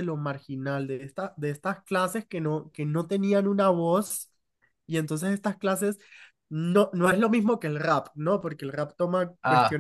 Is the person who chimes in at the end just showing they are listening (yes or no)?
yes